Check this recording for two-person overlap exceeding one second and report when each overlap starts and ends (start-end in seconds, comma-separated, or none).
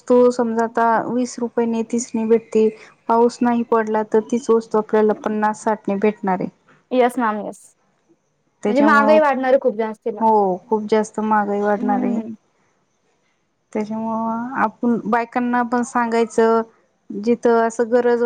none